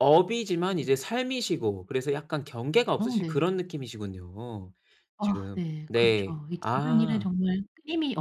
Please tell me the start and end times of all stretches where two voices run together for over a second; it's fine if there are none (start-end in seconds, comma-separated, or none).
5.2-7.3